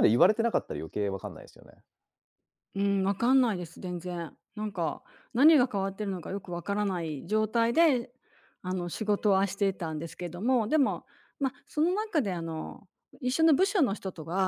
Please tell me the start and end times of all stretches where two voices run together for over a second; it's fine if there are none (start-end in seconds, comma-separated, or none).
none